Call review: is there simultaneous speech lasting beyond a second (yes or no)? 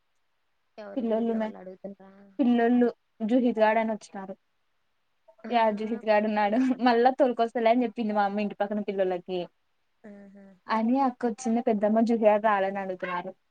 no